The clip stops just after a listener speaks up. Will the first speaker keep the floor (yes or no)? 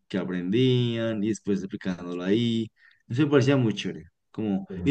yes